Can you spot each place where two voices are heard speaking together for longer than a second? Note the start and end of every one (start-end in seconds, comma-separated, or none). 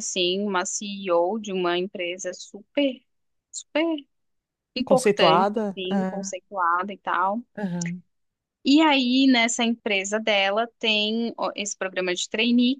4.8-6.3